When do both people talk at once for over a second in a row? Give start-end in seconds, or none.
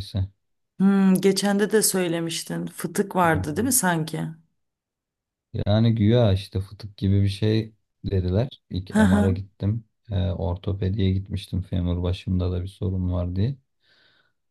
none